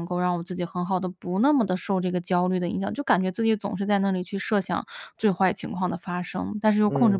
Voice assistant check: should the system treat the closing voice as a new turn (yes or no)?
no